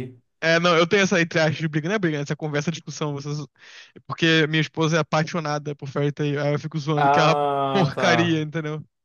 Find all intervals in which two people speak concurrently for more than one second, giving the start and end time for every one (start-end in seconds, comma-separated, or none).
7.0-8.4